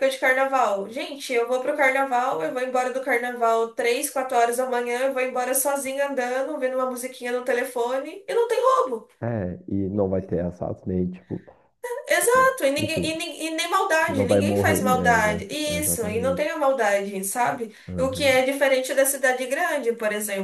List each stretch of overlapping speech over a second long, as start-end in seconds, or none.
14.1-16.5